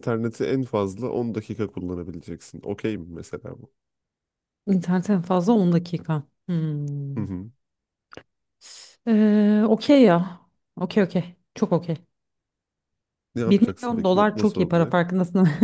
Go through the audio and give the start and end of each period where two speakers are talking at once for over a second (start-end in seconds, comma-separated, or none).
13.5-14.9